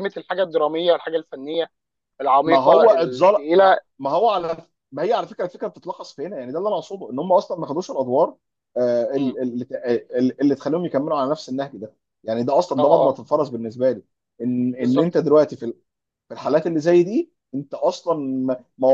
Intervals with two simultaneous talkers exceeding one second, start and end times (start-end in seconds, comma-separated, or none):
2.5-3.8